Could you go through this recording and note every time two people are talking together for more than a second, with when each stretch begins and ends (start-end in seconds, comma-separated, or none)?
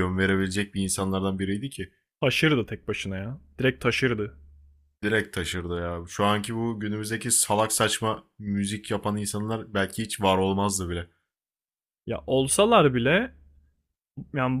none